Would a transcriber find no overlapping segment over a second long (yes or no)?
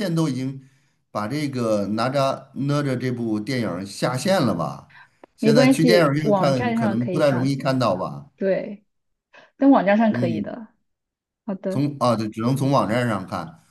no